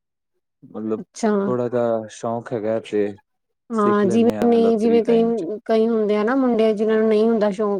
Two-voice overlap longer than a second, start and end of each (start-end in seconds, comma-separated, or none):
3.8-5.2